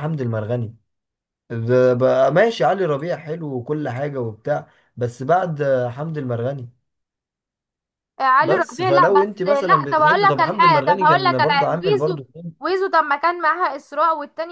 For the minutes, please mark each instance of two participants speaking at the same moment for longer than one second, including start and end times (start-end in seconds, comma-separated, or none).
8.4-12.2